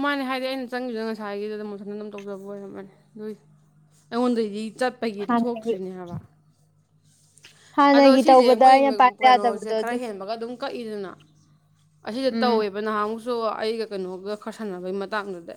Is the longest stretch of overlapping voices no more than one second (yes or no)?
no